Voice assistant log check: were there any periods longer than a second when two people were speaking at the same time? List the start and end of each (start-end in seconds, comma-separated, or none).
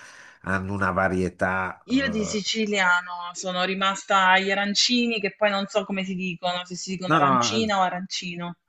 none